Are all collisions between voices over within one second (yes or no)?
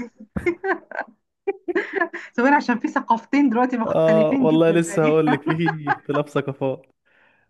no